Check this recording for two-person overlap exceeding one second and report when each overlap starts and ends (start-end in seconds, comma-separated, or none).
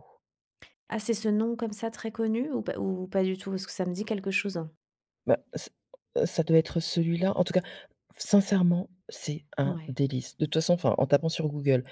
none